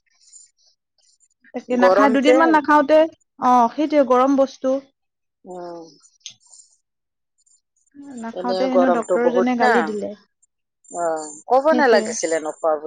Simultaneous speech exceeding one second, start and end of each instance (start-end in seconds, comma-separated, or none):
8.4-10.1